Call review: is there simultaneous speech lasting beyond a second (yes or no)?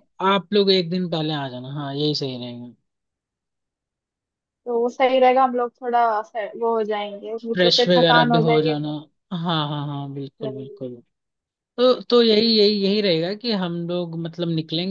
yes